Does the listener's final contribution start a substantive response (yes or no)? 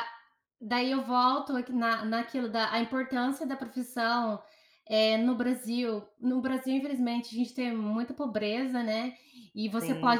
no